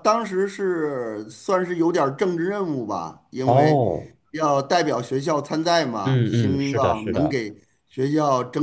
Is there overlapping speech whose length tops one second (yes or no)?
yes